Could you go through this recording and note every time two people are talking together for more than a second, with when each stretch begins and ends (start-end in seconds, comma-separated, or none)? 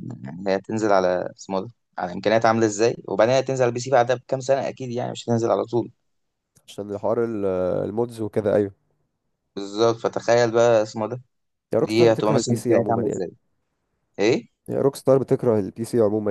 11.8-13.2